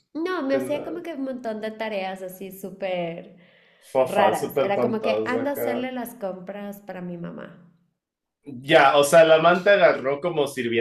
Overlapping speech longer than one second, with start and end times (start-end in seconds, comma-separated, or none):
4.0-5.9